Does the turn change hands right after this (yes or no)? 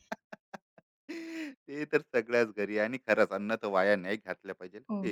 no